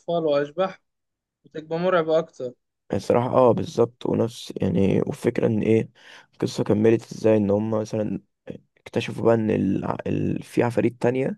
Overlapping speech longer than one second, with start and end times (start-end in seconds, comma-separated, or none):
none